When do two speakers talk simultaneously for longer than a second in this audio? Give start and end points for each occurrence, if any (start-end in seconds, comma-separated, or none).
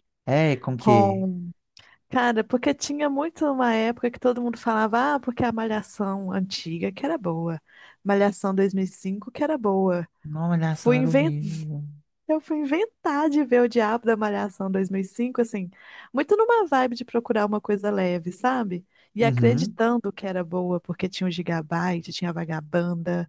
none